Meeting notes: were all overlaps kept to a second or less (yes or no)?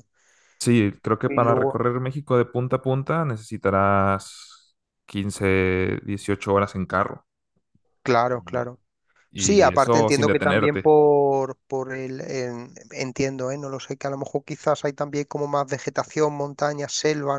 no